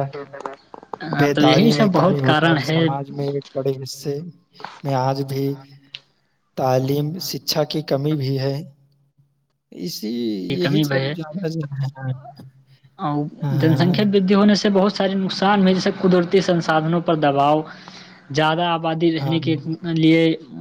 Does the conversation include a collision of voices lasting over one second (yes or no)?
yes